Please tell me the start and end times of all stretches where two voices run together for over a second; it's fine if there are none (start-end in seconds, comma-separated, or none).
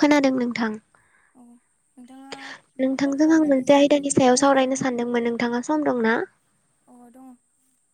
3.0-4.9